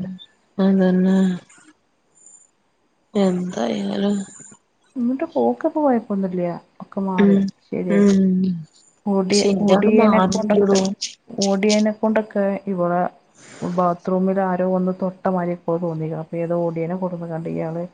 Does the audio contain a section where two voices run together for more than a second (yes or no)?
yes